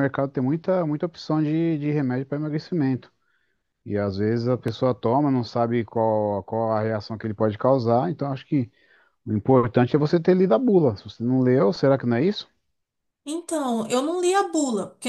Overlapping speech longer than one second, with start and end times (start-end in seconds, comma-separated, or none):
none